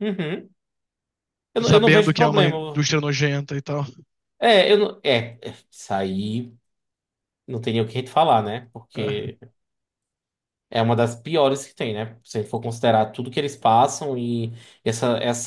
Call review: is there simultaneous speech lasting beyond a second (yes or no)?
yes